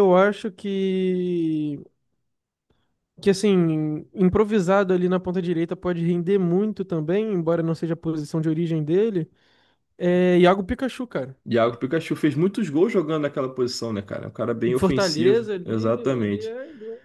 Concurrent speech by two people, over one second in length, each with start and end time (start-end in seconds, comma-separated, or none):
14.7-16.5